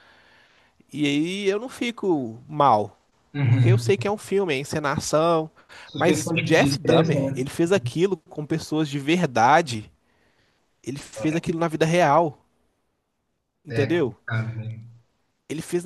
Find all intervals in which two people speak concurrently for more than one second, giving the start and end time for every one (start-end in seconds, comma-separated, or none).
6.0-7.4